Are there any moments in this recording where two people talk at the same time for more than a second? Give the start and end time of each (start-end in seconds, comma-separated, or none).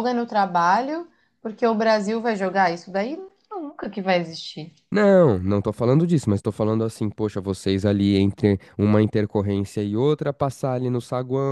none